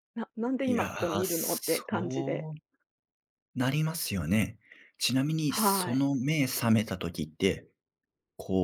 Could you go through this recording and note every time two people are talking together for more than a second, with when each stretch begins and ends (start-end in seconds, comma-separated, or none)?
0.6-2.5